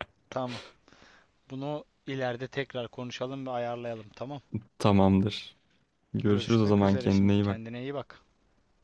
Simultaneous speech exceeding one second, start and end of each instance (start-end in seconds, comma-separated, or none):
6.2-7.6